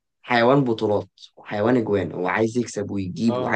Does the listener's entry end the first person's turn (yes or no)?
no